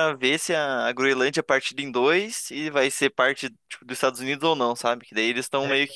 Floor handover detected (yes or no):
no